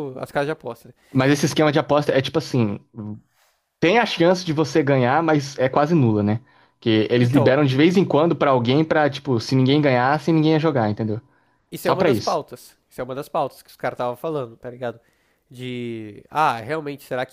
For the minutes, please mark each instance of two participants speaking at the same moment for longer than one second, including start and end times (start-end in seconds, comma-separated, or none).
none